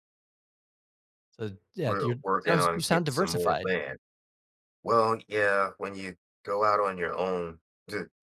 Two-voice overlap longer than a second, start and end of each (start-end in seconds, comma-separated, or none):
1.9-3.7